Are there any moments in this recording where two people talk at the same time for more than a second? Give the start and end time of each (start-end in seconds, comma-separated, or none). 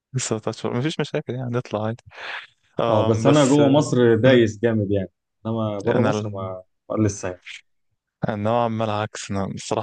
2.9-4.5